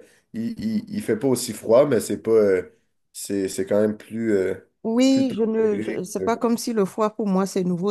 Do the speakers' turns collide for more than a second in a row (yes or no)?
yes